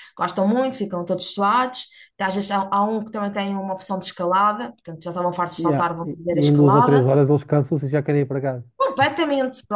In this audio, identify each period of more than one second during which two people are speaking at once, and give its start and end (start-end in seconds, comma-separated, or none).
5.6-7.1